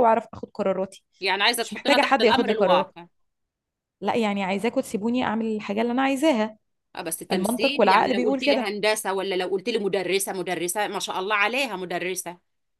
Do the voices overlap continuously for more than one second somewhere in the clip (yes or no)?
yes